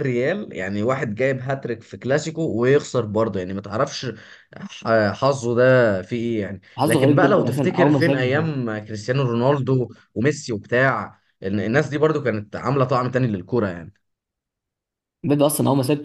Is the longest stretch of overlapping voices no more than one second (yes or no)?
no